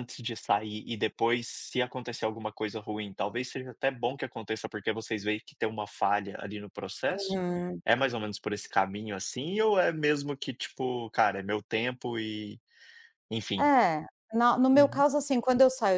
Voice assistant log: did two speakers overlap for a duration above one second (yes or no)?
no